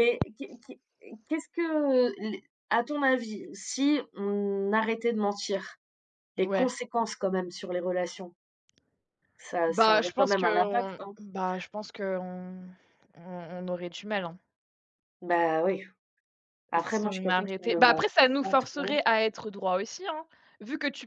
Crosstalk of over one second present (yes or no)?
yes